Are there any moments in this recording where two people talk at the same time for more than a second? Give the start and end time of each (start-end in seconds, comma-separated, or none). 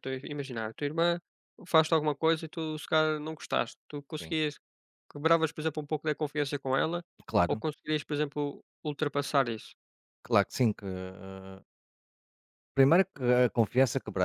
none